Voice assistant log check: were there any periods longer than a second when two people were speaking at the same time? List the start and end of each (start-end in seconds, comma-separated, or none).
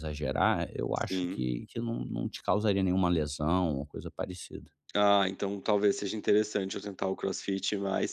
none